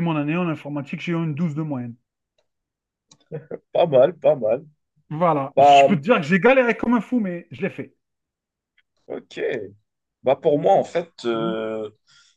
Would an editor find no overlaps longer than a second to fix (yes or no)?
yes